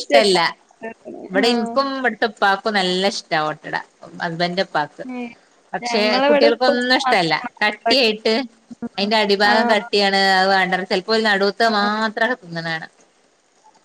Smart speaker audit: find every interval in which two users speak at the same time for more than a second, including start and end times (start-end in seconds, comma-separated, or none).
5.9-8.3